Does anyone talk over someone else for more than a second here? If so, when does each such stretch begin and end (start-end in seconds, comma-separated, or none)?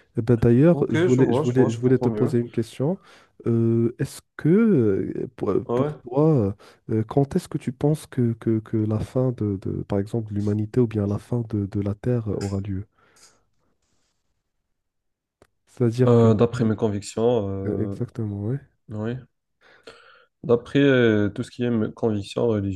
0.7-2.4